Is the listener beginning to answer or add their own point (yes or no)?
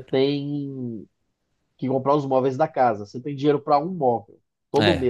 no